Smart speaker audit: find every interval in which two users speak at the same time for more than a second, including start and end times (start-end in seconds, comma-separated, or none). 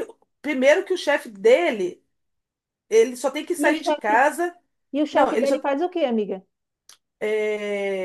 none